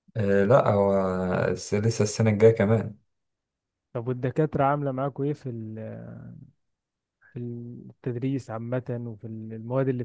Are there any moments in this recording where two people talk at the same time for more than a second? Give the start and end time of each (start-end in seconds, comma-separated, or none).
none